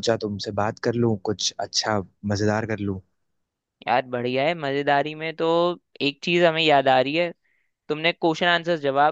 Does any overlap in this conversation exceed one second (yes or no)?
no